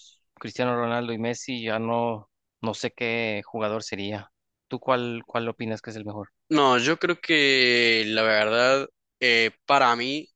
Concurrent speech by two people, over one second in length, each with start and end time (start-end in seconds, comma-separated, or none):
none